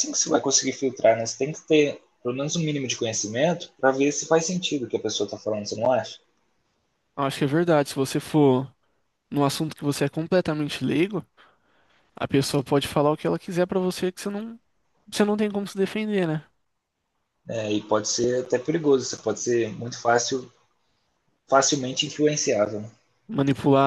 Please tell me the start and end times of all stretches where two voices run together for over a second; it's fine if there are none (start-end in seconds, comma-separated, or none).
none